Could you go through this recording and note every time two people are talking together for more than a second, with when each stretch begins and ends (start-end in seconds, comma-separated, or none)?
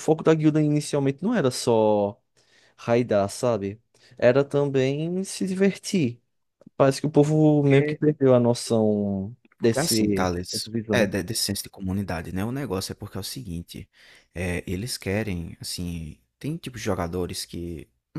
9.6-11.1